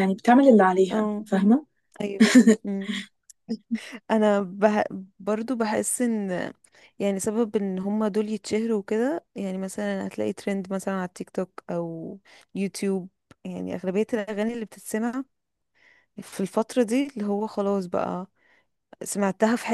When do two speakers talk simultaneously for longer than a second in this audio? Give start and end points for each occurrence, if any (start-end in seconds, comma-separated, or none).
none